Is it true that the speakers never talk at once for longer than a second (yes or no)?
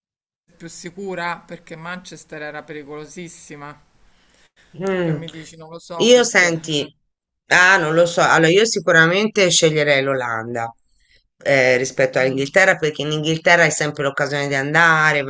yes